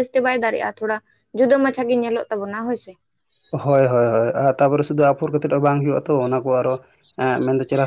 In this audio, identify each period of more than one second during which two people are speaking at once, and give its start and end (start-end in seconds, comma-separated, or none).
none